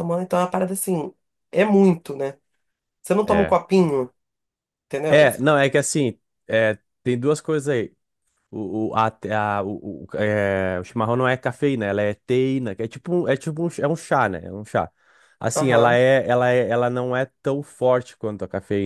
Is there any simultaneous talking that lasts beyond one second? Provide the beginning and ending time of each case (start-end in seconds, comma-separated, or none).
none